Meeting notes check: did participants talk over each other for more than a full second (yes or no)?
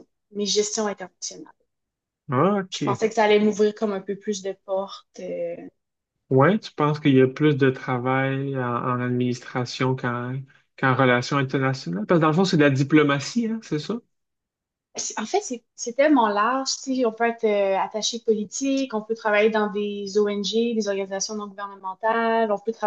no